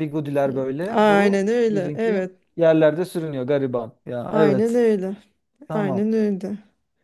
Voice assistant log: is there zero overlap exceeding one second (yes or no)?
no